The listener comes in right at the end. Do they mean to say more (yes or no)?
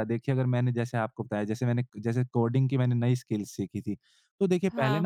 no